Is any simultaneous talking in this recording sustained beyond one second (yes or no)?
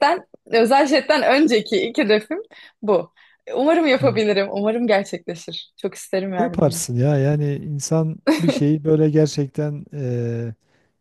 no